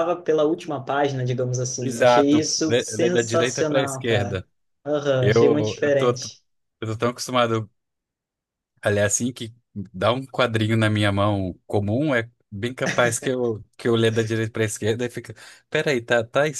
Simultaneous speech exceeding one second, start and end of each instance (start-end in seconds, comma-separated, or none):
1.8-4.4, 5.2-6.4